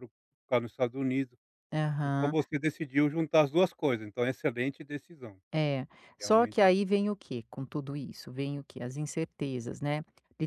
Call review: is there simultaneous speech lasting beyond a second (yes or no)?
no